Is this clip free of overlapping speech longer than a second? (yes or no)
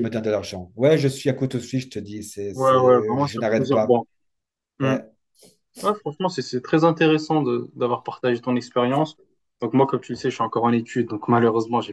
no